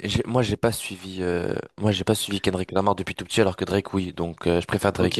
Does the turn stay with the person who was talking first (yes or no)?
no